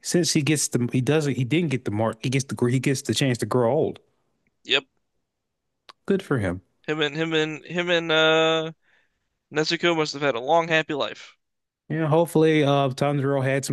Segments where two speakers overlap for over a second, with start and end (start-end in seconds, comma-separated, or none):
none